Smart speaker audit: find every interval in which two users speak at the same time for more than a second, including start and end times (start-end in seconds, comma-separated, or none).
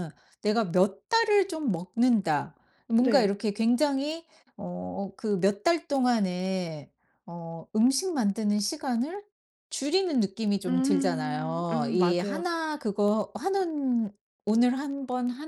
10.7-12.4